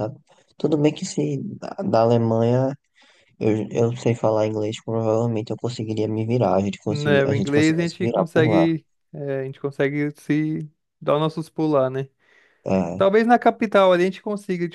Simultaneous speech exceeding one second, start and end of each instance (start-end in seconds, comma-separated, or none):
6.9-8.7